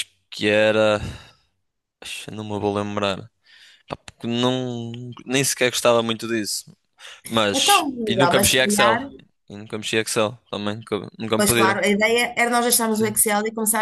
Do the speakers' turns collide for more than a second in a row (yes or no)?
yes